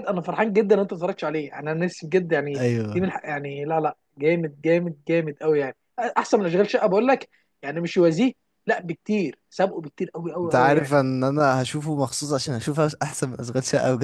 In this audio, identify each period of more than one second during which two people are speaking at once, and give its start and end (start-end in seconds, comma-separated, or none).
none